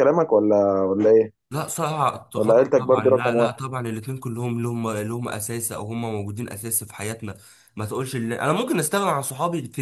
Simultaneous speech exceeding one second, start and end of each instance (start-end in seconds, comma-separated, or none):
2.4-3.6